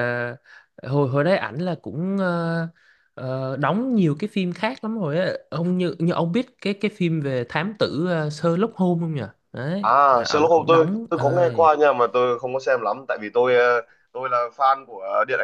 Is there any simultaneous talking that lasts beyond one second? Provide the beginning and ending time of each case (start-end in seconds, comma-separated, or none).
9.8-11.5